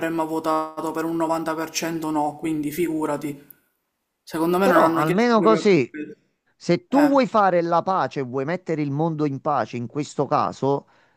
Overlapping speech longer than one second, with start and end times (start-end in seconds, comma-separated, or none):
4.6-5.9